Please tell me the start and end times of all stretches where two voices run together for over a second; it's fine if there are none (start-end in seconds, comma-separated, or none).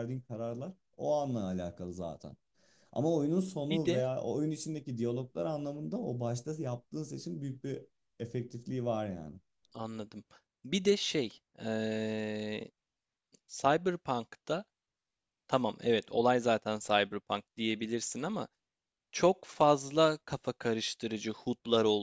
none